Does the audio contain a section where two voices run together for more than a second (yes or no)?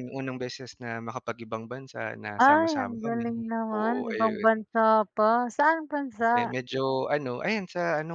yes